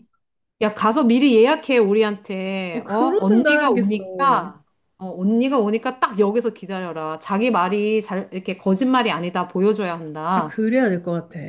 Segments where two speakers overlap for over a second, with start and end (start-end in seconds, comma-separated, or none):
2.7-4.0